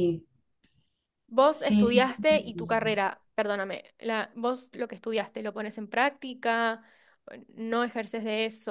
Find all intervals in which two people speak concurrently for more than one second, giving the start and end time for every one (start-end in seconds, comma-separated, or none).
1.4-2.8